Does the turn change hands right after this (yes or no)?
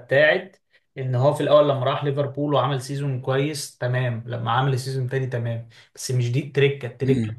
no